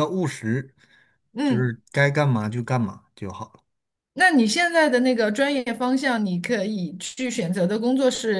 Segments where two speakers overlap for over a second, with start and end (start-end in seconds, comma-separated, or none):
none